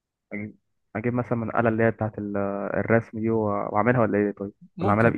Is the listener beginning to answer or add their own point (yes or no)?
yes